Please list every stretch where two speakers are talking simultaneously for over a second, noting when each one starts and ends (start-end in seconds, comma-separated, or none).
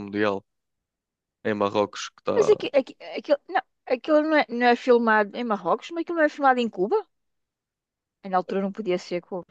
none